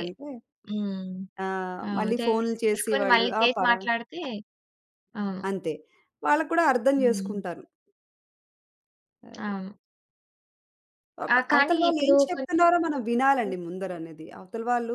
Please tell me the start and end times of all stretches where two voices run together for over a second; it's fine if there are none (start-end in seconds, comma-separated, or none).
1.9-3.8, 11.3-13.5